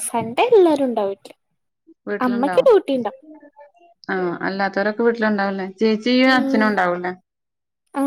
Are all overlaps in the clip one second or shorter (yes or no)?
yes